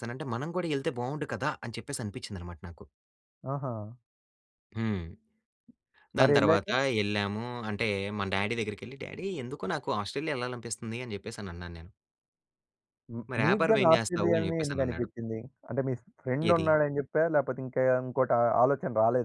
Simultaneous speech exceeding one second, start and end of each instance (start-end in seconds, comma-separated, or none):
13.3-15.1